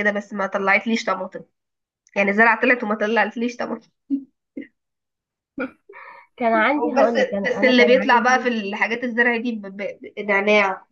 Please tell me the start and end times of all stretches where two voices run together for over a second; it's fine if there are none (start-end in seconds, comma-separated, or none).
7.0-8.5